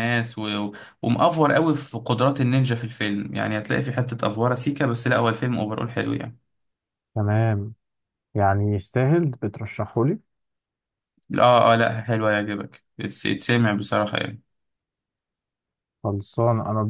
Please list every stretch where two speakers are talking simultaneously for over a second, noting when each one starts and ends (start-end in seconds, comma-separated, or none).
none